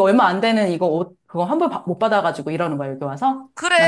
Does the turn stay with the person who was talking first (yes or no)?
no